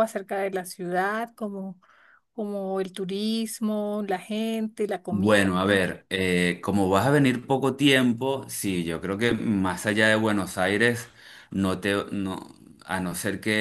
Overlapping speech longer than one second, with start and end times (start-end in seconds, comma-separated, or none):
none